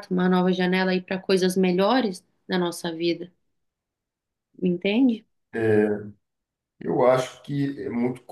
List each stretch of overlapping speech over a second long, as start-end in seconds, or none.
none